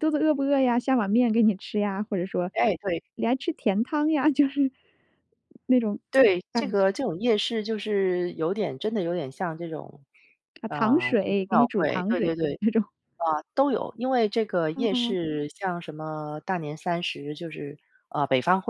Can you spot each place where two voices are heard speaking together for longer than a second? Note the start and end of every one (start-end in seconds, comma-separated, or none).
10.7-12.6